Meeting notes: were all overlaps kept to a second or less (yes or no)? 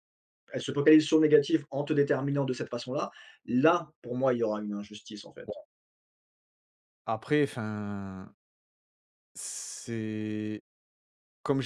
yes